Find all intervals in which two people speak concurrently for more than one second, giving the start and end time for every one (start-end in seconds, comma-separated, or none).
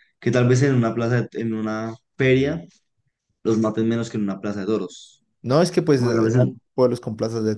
none